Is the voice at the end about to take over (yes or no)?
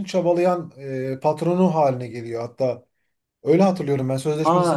yes